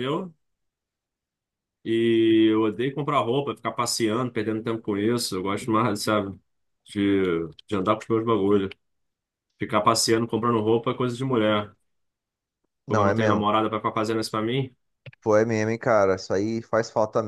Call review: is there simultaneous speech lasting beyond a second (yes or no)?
no